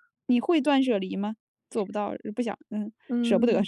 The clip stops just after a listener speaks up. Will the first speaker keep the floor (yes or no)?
no